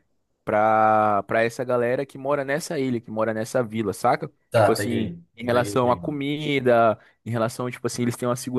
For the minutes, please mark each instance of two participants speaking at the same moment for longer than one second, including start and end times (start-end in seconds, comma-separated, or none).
4.5-6.1